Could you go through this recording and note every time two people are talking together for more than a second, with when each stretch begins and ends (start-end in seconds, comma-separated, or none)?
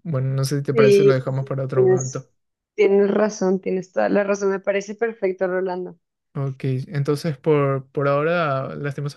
0.7-2.3